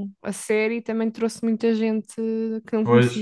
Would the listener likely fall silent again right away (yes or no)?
no